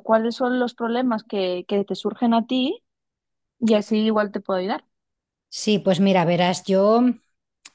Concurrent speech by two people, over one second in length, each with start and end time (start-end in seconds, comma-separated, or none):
none